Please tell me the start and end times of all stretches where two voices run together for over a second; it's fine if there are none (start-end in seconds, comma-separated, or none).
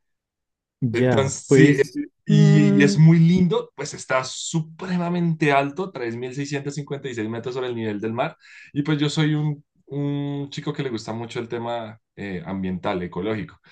0.9-3.0